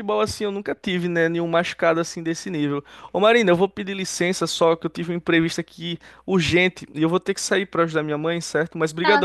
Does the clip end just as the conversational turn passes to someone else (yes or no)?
yes